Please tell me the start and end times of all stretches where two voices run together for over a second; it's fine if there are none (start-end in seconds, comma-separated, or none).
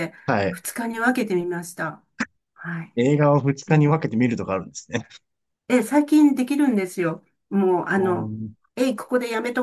none